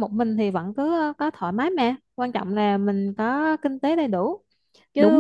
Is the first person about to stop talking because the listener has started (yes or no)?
yes